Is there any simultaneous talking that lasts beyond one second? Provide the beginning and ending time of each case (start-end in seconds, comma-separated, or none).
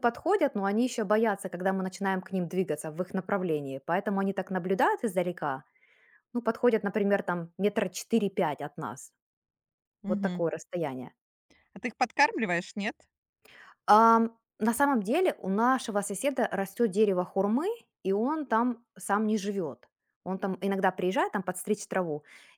none